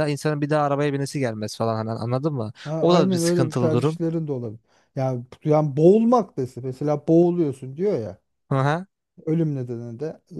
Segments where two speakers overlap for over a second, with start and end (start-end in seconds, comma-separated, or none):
2.6-4.0